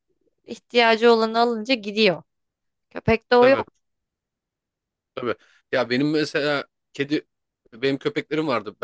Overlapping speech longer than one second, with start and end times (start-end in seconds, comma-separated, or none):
none